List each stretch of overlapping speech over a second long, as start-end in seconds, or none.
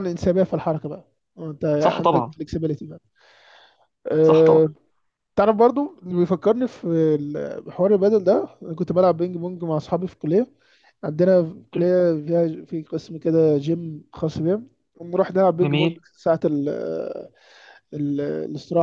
none